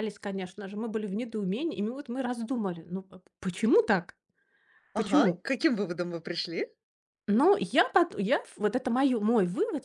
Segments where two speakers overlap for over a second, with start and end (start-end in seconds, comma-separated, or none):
none